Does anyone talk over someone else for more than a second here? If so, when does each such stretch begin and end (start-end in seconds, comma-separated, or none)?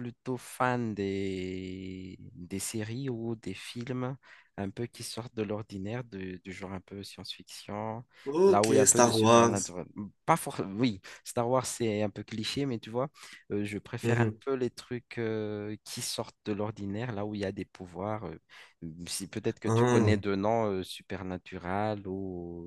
8.4-9.7